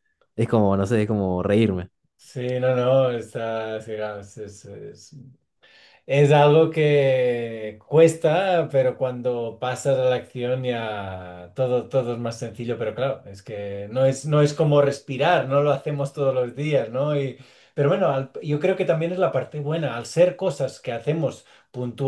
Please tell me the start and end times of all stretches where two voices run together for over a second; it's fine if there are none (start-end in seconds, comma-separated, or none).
none